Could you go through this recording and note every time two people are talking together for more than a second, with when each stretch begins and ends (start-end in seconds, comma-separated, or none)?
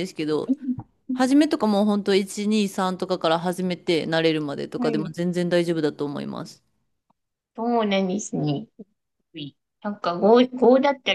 none